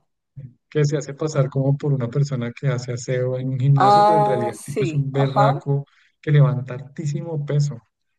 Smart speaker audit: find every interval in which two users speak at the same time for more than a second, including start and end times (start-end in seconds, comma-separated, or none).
3.8-5.6